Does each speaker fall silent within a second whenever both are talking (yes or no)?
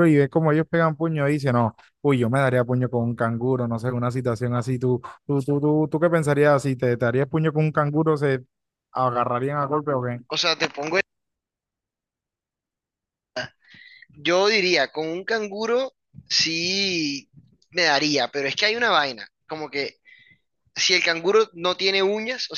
yes